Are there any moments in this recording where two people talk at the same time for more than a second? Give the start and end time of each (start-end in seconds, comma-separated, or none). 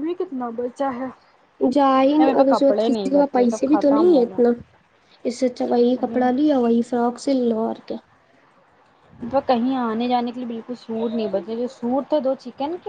2.2-4.4